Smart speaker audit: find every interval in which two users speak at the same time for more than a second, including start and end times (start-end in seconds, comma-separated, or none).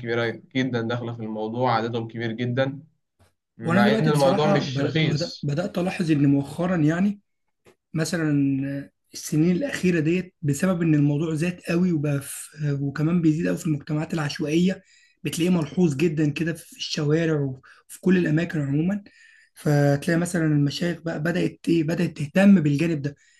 3.6-5.5